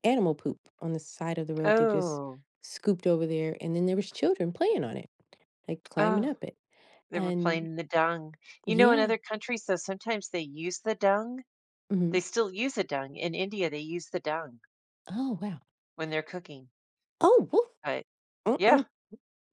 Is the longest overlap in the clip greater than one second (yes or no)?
no